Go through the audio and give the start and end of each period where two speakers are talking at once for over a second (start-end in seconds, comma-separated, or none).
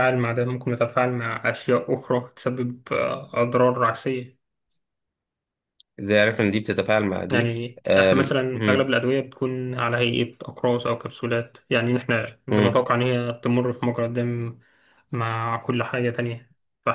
7.3-8.9